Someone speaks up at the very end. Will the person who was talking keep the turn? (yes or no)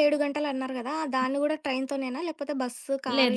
no